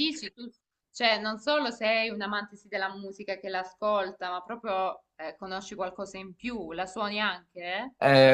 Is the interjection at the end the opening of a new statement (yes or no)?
yes